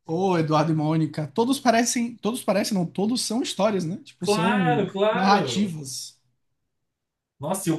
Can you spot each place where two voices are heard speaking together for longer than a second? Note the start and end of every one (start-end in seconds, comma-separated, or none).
4.2-5.7